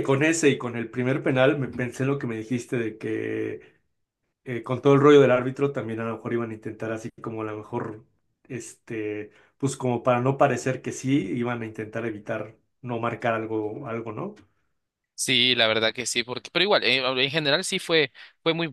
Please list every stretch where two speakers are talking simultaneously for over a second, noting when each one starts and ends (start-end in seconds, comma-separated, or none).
none